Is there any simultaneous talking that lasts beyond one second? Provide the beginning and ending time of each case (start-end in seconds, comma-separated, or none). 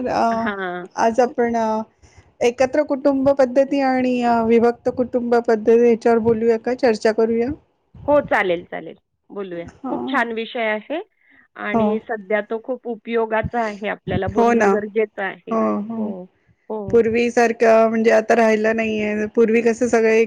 none